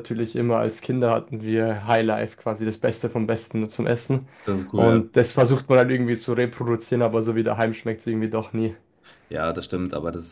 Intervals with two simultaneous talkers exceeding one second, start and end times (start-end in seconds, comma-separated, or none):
none